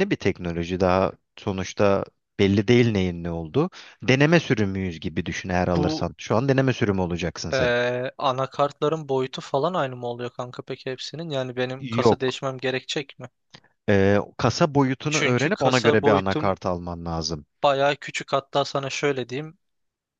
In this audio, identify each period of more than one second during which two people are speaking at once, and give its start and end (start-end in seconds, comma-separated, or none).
15.1-16.6